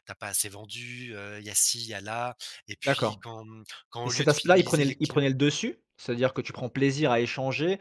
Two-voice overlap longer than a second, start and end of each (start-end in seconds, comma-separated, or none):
4.0-5.3